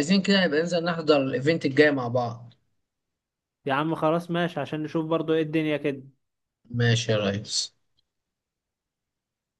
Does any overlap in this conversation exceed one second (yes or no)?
no